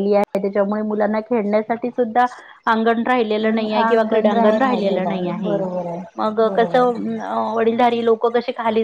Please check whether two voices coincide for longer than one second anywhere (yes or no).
yes